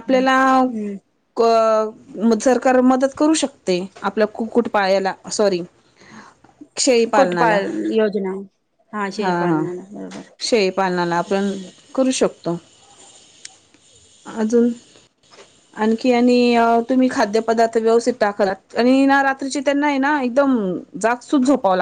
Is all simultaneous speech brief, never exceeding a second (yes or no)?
yes